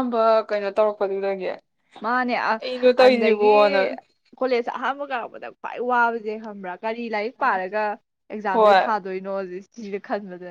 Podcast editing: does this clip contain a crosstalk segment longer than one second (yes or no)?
no